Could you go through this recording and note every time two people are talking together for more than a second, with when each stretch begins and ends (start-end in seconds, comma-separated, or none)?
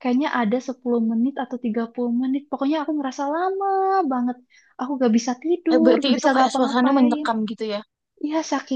5.7-7.2